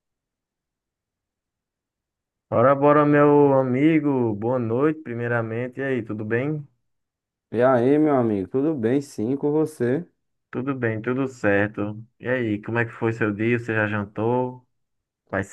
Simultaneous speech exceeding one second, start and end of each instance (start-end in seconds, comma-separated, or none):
none